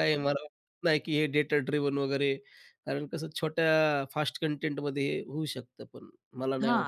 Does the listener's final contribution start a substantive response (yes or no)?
yes